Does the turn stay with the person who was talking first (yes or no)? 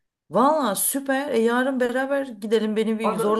yes